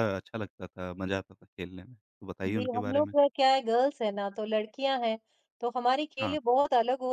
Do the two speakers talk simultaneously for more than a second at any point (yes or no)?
no